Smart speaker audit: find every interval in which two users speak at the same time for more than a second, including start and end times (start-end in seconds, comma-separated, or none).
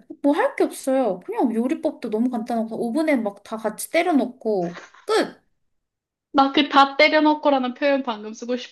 none